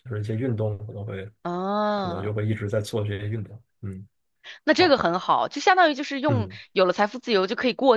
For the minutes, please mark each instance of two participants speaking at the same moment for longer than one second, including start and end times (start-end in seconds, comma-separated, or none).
none